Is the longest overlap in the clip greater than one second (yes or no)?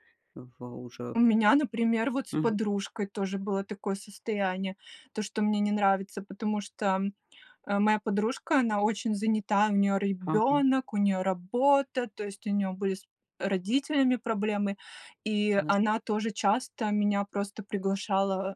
no